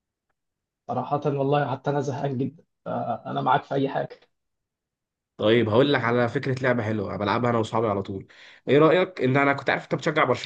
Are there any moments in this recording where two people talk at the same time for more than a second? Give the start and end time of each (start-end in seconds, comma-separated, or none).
none